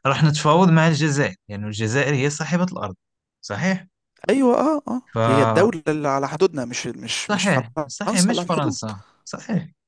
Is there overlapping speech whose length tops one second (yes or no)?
yes